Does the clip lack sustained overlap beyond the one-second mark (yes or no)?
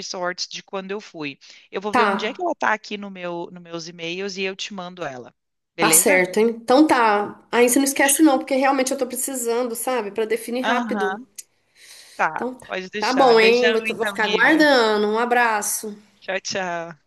no